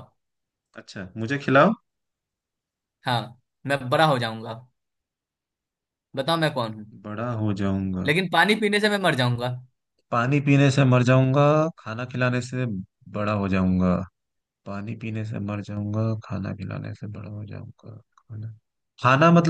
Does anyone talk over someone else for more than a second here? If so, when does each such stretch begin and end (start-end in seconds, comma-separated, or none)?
none